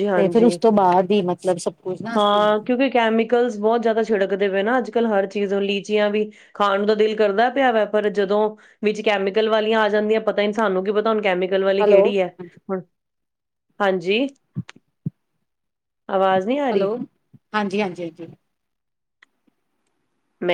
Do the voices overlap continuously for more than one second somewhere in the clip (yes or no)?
no